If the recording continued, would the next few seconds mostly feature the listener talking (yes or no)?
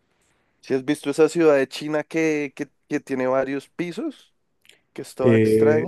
yes